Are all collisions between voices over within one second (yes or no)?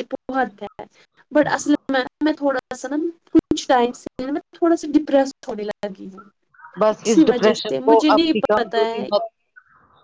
no